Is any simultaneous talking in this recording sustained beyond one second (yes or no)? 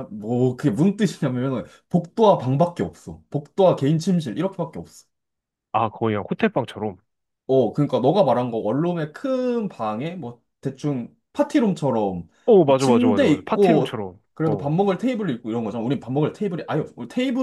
yes